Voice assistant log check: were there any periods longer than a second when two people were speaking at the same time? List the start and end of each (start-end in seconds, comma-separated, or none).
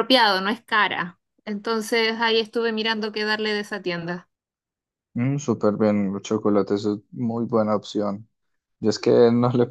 none